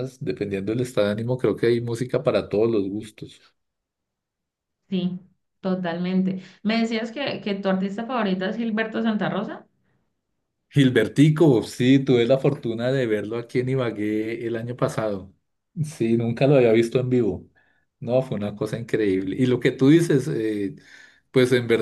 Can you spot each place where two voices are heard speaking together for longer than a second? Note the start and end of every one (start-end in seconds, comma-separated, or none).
none